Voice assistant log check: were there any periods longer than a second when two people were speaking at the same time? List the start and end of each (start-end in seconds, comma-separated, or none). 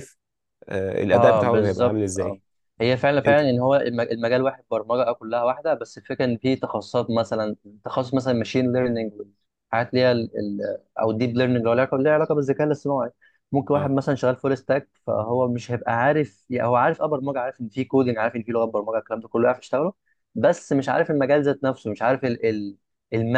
1.1-2.4